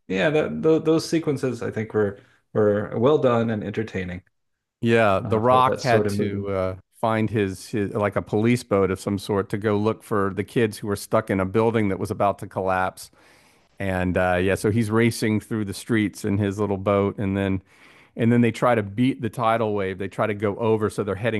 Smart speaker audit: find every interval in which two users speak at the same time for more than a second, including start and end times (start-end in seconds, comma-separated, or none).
5.2-6.5